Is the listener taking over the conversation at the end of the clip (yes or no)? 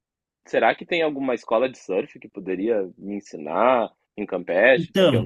yes